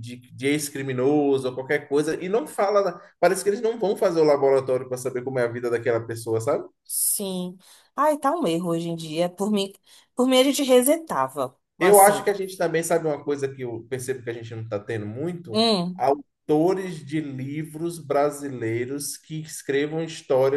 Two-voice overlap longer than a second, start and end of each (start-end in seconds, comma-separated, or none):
none